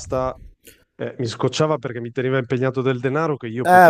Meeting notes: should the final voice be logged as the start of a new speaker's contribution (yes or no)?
yes